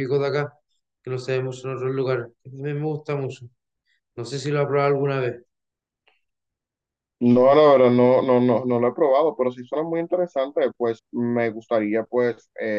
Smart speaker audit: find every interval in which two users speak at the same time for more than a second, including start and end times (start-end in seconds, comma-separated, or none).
none